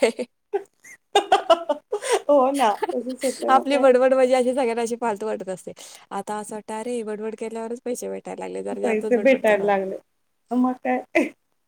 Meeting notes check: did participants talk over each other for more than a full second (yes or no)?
no